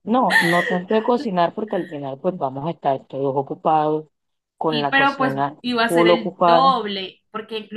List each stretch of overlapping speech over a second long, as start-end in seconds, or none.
4.7-6.7